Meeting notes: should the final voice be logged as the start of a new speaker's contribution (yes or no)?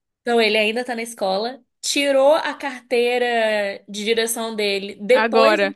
no